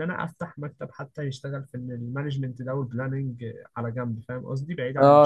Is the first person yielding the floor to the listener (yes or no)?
yes